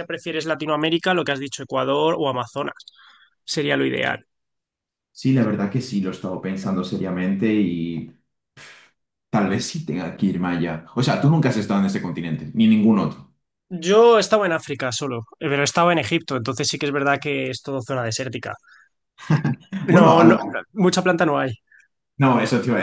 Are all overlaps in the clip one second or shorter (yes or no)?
yes